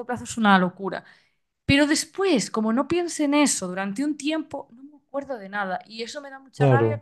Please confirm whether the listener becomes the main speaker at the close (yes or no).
no